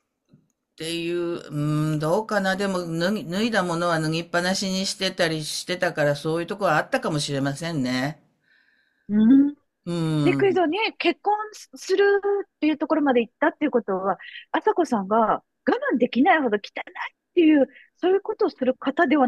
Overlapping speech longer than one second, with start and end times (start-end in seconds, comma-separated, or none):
none